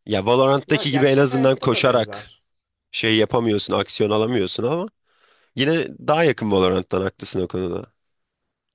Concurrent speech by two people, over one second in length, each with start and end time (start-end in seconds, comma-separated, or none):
0.7-2.3